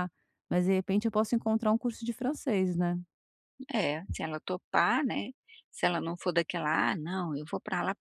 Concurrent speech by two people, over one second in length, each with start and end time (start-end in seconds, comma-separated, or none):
none